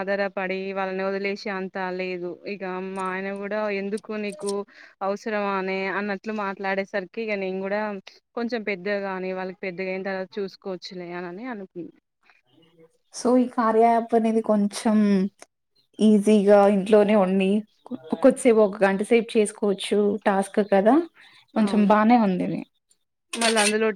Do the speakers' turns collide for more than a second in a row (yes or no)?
no